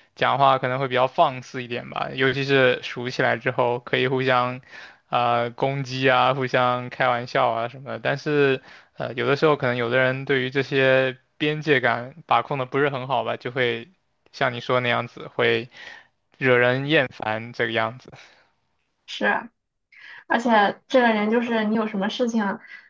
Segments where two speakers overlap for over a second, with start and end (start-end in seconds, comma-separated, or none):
none